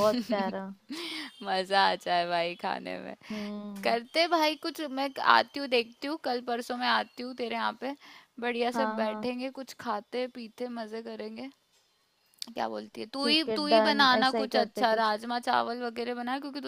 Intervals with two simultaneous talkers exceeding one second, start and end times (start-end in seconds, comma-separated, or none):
13.2-15.1